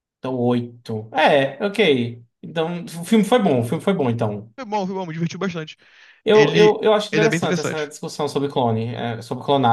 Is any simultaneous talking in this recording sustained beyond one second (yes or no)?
yes